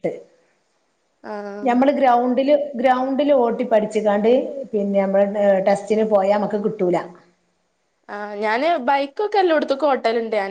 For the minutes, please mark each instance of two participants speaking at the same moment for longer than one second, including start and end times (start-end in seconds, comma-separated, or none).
none